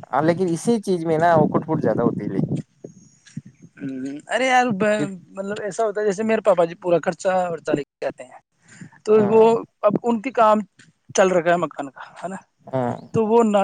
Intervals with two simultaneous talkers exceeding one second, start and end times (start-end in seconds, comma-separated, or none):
none